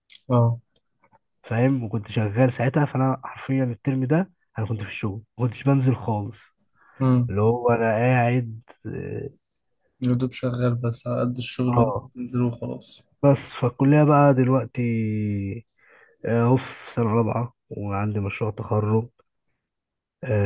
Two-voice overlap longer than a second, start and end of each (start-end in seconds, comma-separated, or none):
none